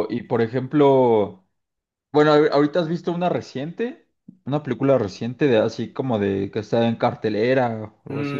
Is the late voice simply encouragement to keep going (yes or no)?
no